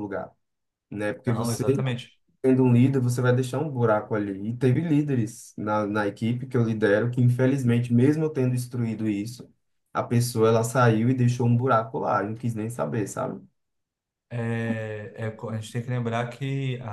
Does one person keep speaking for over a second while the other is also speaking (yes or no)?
no